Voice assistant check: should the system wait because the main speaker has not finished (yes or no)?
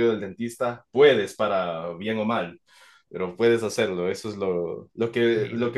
yes